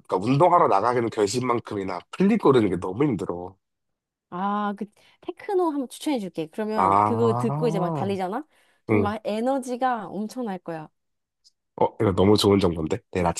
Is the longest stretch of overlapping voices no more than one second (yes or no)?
no